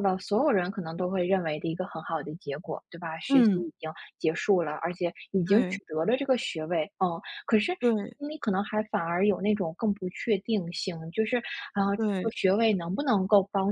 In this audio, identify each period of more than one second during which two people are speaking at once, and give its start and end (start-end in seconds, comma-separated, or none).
none